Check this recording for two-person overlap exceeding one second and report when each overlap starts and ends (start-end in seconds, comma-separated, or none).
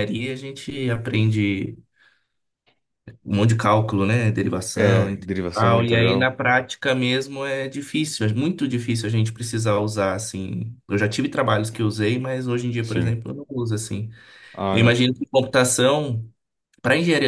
4.7-6.3